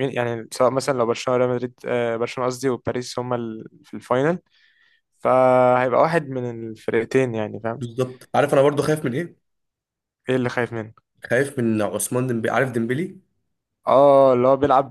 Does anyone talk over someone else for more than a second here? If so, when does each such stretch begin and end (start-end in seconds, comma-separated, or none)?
none